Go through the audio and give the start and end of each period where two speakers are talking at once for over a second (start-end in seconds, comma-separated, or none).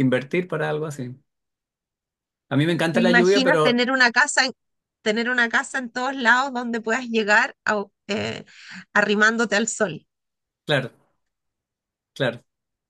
2.6-3.8